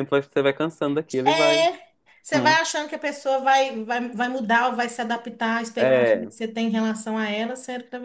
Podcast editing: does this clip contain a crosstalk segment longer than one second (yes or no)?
no